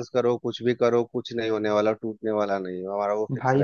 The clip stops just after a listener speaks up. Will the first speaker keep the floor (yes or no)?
no